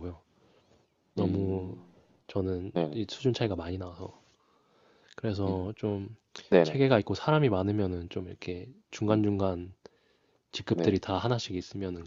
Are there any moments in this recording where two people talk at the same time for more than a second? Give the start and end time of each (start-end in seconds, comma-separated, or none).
none